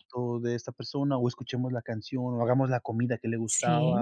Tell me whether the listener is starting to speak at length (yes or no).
yes